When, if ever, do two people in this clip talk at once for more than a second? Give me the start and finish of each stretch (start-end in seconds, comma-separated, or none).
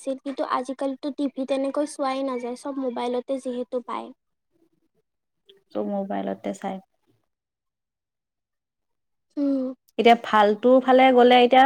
none